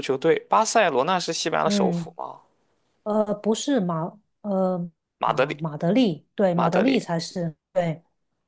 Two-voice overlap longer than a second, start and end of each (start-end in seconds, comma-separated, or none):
none